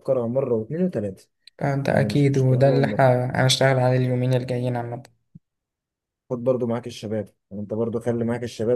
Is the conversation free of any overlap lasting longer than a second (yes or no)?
no